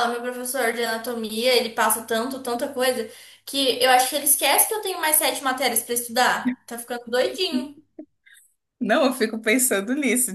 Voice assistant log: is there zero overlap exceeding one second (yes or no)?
yes